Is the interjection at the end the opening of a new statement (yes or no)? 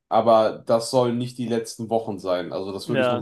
no